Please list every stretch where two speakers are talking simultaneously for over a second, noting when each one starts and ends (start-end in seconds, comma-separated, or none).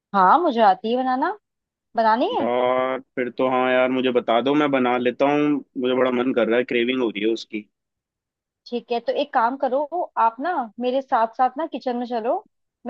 none